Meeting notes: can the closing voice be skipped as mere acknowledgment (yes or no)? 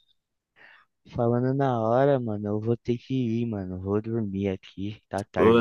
no